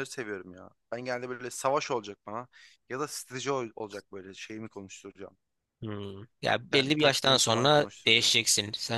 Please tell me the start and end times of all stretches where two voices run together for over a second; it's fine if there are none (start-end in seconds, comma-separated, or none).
6.7-8.4